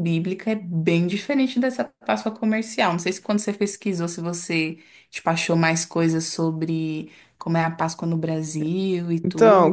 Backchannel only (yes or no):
no